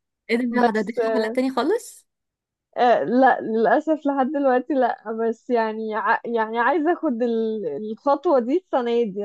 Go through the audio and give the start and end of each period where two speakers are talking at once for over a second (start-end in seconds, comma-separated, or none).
none